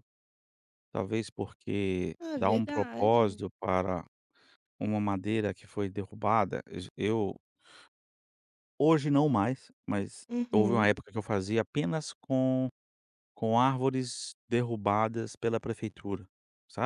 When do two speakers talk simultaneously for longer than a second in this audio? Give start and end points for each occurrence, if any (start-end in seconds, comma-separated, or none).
2.2-3.4